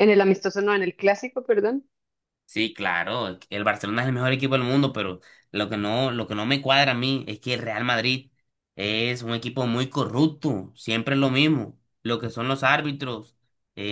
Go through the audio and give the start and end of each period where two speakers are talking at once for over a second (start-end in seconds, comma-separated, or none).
none